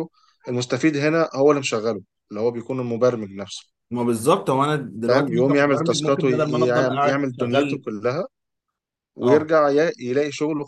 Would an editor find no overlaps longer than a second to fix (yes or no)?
no